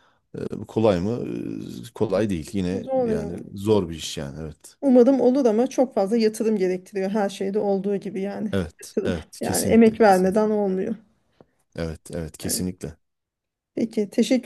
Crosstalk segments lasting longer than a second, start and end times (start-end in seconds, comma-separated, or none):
8.5-10.4